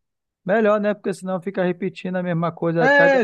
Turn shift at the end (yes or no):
yes